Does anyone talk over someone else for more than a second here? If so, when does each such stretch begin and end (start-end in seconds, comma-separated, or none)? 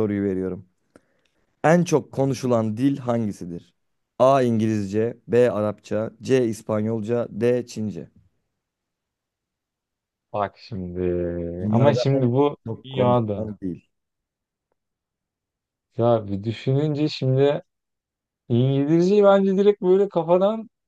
11.7-13.5